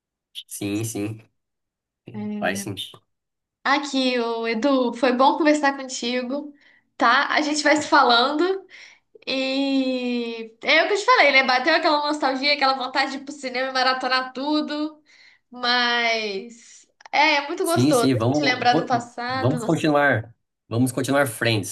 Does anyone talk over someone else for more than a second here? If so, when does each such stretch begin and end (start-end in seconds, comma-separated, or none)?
17.6-19.6